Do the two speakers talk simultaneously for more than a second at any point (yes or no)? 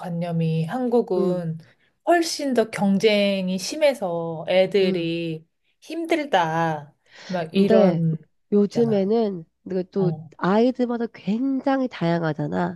no